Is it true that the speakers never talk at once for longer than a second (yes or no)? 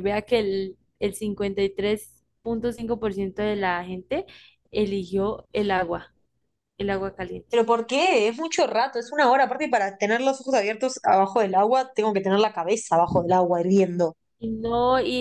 yes